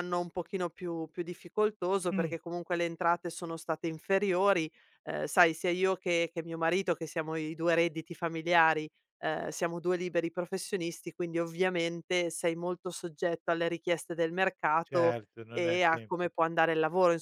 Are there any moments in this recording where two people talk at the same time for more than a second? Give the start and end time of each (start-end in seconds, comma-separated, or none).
14.8-16.3